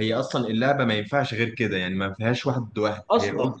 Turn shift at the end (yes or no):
no